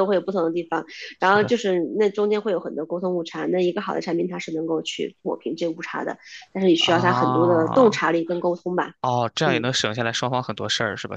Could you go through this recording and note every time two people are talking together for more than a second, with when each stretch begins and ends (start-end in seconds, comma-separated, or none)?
6.8-8.0